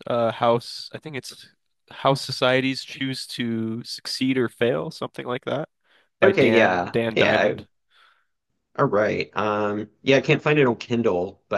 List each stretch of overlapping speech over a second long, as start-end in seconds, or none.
6.2-7.7